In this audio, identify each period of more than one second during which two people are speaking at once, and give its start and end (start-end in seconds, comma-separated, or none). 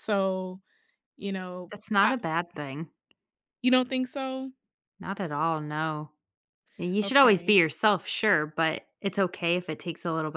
none